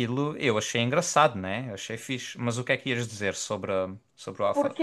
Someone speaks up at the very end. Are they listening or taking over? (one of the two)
taking over